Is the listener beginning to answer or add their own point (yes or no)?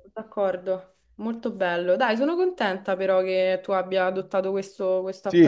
yes